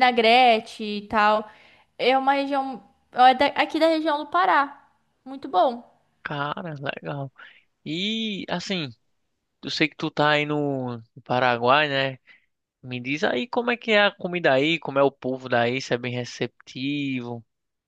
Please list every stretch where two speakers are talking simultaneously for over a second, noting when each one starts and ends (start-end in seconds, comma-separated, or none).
none